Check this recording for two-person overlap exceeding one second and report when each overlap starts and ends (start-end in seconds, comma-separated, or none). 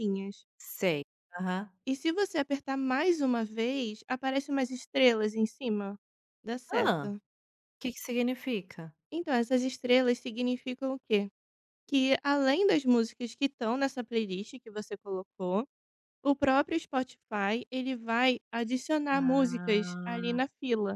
19.1-20.4